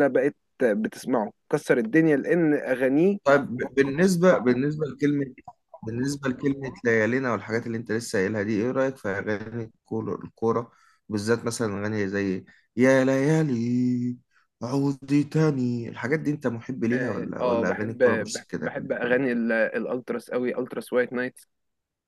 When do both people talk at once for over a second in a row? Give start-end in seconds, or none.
16.9-19.3